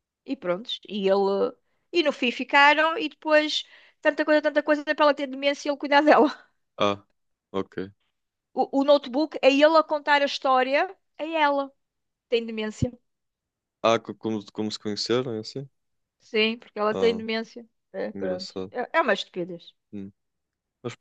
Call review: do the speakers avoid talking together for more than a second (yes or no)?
yes